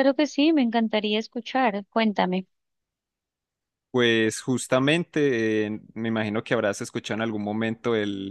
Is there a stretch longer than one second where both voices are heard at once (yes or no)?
no